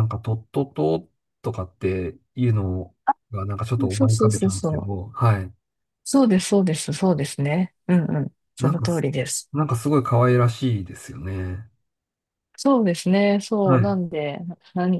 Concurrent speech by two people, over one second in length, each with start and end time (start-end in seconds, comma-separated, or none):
3.8-5.1